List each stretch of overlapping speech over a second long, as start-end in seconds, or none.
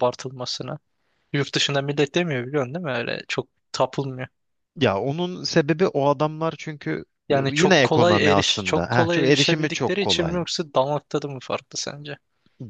7.3-10.4